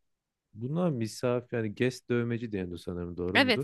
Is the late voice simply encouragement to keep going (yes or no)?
no